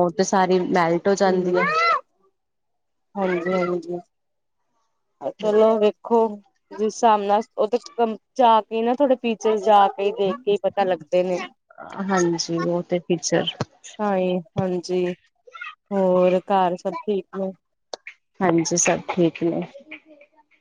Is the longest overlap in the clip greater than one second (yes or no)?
no